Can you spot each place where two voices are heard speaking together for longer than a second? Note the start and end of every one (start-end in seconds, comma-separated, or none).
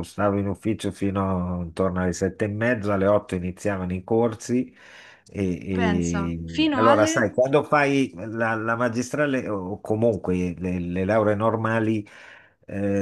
5.8-7.3